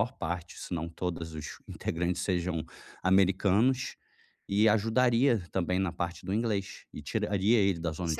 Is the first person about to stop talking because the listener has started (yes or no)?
yes